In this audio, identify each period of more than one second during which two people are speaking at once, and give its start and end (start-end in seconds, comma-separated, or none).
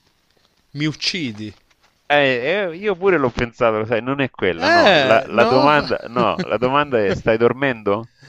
4.5-5.9